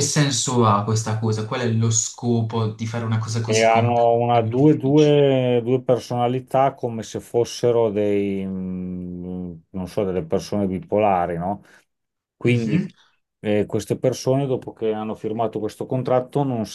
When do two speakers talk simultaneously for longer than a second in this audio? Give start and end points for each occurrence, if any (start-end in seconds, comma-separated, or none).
3.4-5.1